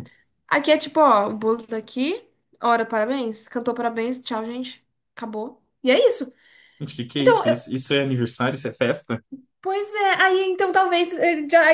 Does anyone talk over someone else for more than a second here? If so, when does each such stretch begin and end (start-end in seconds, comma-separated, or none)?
none